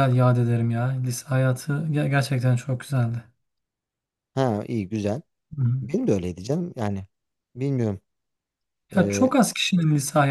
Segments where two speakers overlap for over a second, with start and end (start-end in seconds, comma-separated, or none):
none